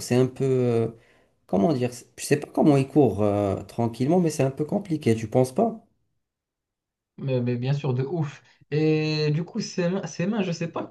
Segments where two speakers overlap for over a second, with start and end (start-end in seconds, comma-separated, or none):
none